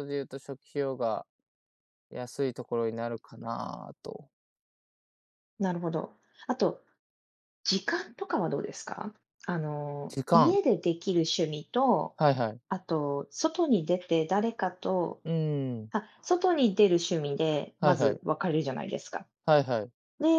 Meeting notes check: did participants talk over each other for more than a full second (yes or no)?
no